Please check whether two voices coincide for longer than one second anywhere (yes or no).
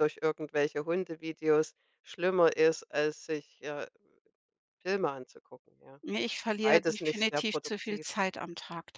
yes